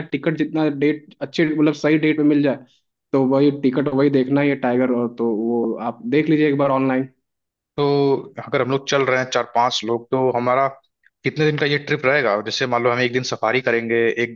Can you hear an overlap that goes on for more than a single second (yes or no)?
no